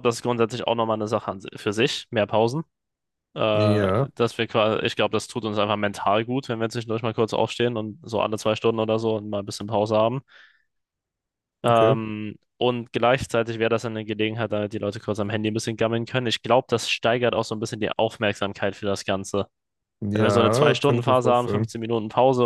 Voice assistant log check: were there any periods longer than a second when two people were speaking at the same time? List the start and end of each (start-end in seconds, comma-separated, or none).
20.1-21.7